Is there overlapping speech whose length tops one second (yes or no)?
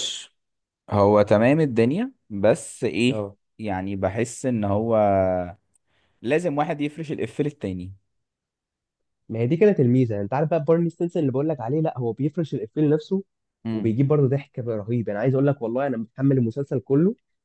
no